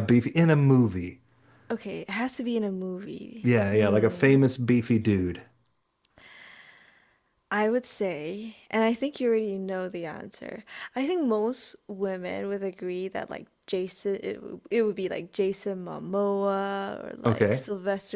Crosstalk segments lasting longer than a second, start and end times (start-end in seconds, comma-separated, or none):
none